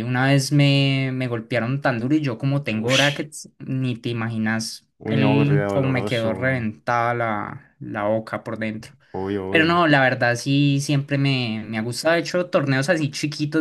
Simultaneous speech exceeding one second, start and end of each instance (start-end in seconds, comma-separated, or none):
5.0-6.7